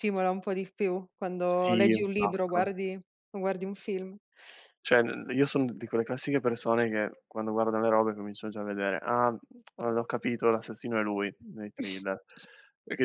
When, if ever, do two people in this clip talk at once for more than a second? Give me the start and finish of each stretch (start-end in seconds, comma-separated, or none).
1.5-2.7